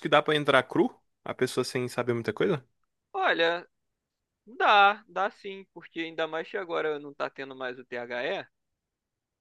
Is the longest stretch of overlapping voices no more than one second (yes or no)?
yes